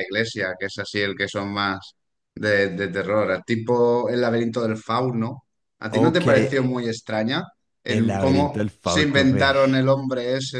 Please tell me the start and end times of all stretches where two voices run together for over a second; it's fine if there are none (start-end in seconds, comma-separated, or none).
7.9-9.5